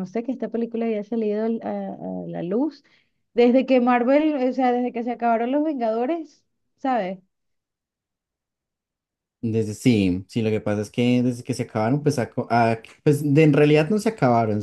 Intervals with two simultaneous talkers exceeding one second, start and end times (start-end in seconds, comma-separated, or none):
none